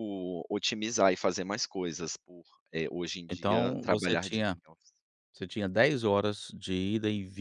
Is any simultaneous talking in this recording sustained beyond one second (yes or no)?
yes